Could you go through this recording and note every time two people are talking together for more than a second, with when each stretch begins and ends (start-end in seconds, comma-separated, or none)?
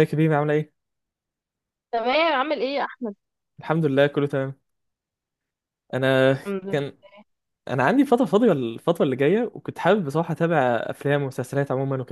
none